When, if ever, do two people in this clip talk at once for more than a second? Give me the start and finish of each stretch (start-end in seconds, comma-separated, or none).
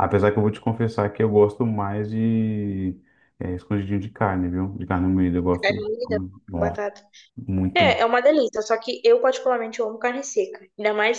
none